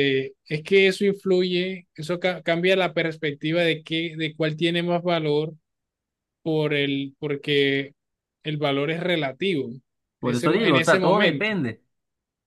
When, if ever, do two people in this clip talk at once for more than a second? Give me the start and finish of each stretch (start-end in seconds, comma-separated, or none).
10.2-11.5